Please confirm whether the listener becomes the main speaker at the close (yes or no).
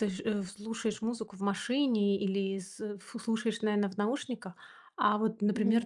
no